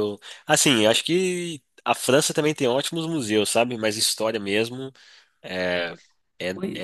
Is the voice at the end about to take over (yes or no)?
no